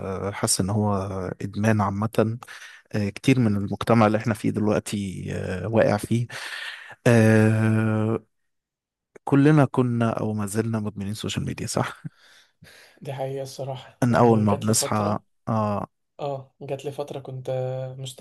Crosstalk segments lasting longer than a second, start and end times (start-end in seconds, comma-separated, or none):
14.0-15.2